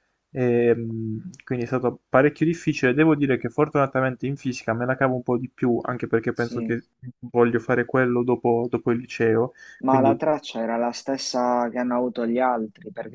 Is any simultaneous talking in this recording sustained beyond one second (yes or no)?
no